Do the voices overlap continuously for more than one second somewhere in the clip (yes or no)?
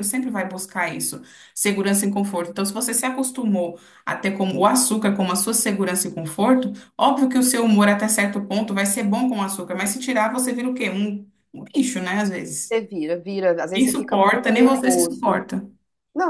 yes